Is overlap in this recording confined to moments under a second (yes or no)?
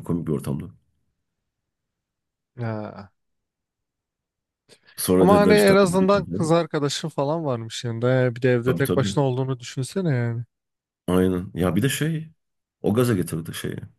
no